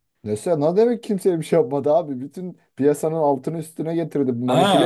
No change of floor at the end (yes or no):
no